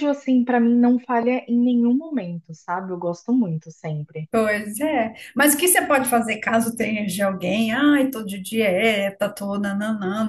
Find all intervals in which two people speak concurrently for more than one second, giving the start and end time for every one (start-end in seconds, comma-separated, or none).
none